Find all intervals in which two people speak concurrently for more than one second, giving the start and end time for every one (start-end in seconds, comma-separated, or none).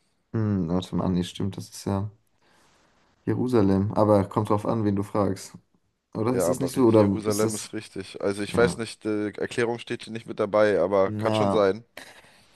6.3-7.7